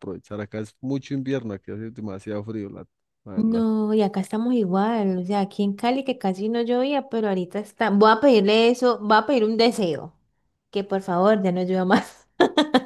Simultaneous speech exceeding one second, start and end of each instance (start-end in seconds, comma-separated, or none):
none